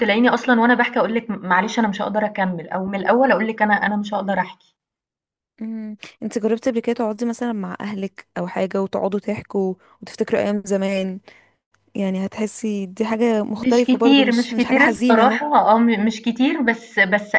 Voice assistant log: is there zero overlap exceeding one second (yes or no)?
no